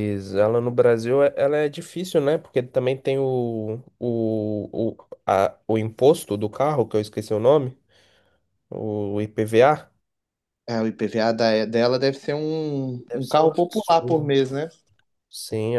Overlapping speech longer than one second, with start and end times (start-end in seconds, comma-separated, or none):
13.1-14.3